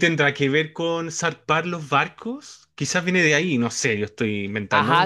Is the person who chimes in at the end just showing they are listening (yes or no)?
no